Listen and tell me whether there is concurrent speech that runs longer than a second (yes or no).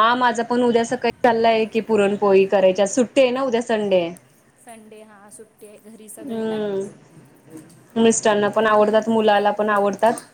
no